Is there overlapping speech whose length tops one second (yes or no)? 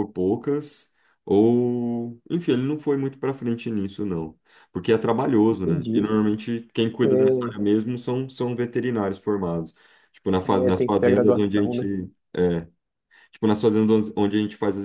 yes